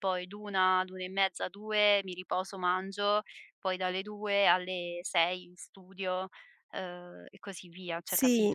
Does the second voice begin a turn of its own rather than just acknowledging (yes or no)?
yes